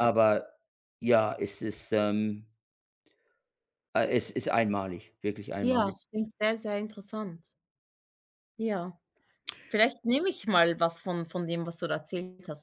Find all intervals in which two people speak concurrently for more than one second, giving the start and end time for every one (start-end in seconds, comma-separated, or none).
none